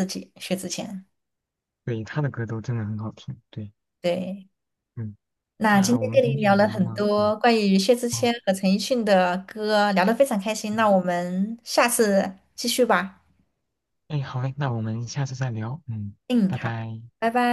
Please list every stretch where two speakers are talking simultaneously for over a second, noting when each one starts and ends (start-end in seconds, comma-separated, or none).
5.7-7.2